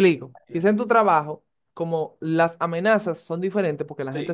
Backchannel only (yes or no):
yes